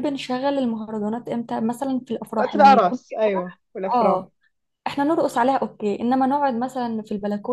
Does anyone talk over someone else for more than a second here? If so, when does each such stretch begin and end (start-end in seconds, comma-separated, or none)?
2.4-4.2